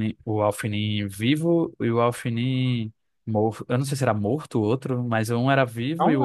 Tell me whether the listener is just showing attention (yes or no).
yes